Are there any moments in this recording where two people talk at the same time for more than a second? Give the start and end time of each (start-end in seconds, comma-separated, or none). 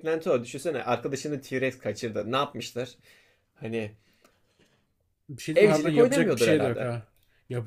5.5-6.9